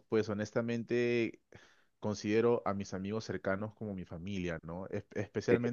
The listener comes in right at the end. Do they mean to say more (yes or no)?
no